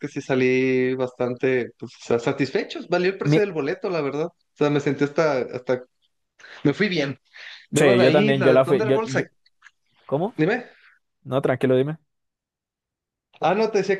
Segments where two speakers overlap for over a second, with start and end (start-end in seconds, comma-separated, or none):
7.8-9.1